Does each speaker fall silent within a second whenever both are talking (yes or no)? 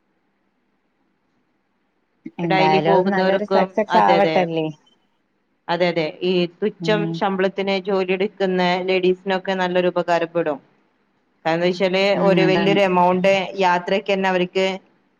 no